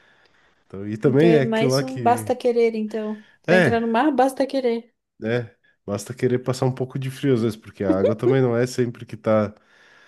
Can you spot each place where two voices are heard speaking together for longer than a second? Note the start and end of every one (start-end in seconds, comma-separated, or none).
1.0-2.2